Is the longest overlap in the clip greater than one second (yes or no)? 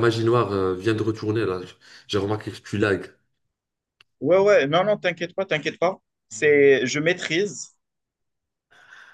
no